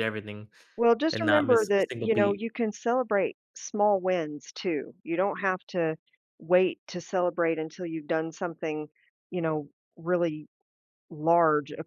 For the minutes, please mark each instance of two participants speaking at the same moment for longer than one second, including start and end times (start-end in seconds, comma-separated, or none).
1.1-2.5